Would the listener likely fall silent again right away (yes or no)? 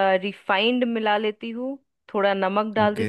yes